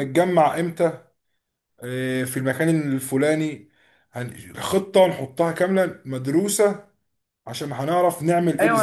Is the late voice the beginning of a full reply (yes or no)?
yes